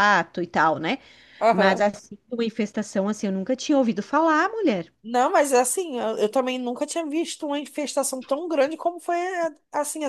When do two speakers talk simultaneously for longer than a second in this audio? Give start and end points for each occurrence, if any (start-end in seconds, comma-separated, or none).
none